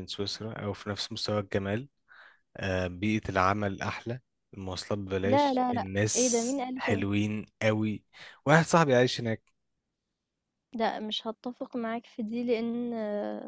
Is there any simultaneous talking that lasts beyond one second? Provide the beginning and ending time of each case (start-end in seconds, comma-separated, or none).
5.2-7.0